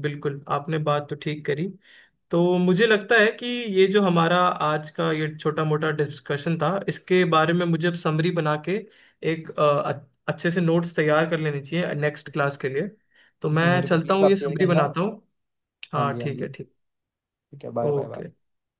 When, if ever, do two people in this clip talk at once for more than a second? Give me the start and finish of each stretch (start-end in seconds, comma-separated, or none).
13.5-14.9